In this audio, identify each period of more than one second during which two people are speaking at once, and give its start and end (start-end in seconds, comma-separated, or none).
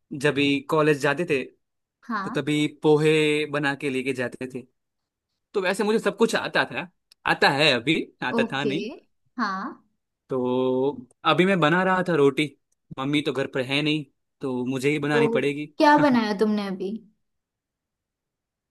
none